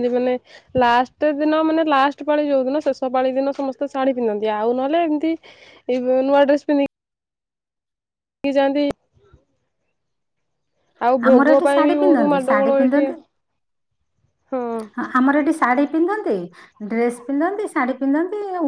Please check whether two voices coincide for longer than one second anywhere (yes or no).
yes